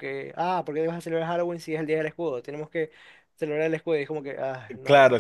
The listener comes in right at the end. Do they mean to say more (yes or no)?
yes